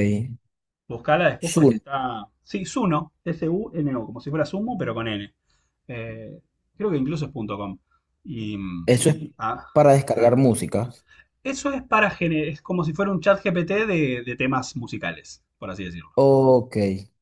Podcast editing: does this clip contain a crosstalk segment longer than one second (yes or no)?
no